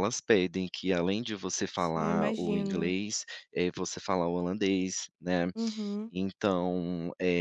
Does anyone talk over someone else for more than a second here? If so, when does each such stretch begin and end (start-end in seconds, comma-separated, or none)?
1.7-2.9